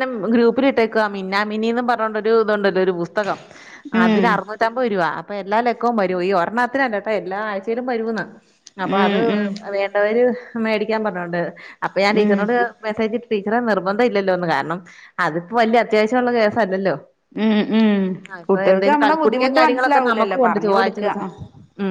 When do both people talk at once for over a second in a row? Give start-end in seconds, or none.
18.5-21.1